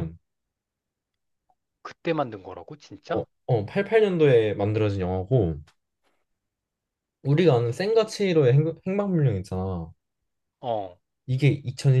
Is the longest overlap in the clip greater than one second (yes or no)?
no